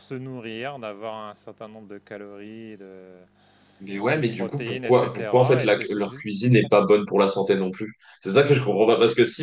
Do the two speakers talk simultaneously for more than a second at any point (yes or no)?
yes